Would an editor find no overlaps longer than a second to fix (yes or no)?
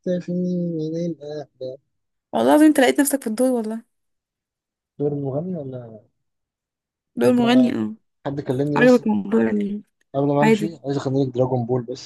yes